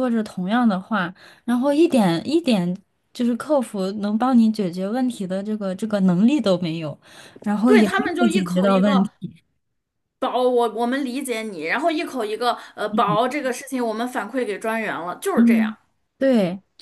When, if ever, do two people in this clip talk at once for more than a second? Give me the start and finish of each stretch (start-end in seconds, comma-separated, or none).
7.7-9.1